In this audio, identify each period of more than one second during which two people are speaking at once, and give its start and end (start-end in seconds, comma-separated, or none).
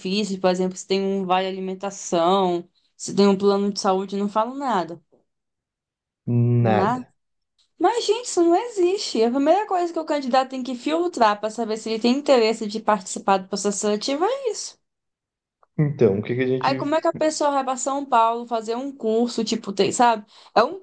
none